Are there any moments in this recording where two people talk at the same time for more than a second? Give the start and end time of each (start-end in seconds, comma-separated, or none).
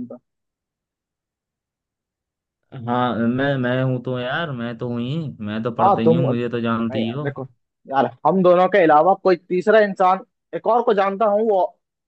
5.8-7.3